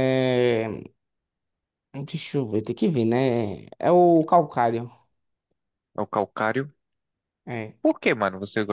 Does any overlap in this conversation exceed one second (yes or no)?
no